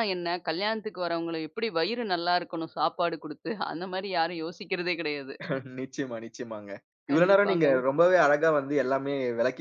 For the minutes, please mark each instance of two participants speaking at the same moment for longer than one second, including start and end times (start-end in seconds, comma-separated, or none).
none